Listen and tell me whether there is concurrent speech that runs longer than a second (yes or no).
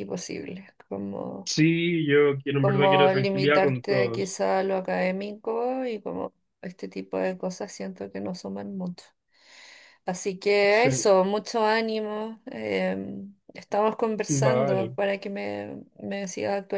yes